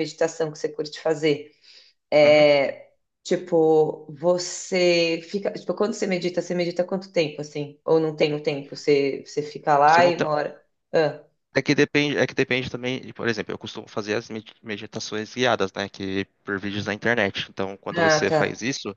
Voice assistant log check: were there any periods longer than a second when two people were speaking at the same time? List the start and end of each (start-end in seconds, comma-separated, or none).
none